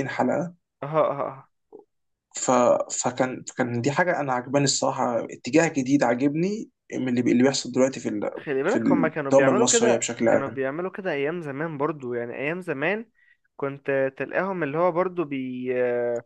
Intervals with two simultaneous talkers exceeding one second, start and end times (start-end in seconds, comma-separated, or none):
8.4-10.6